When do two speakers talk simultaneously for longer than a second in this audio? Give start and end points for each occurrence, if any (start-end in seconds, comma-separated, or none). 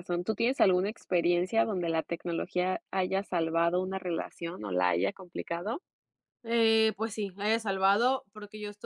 none